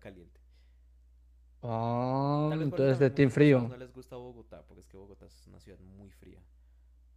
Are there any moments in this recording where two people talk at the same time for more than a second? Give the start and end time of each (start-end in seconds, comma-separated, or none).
2.5-3.7